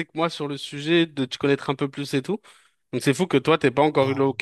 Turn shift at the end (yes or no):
no